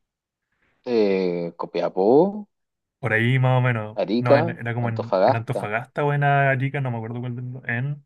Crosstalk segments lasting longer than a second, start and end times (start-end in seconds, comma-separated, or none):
4.0-5.7